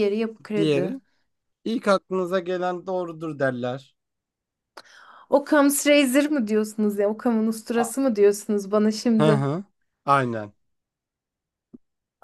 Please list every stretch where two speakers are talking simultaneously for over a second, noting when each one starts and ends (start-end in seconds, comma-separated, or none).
none